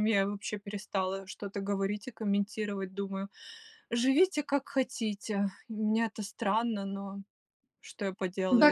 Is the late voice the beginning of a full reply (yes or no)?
yes